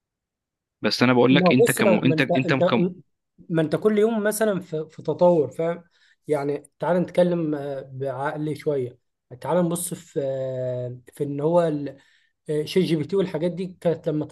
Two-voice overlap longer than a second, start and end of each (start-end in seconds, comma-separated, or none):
1.3-2.9